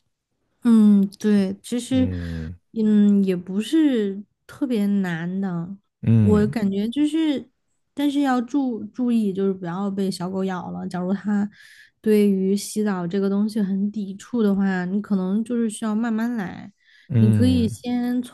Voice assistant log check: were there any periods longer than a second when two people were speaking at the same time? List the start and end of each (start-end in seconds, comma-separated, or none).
none